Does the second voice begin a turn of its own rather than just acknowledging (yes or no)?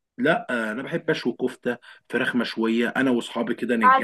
no